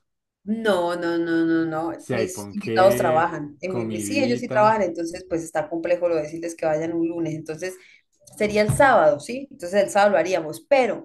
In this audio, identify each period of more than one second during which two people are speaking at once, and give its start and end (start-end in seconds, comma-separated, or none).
1.9-4.8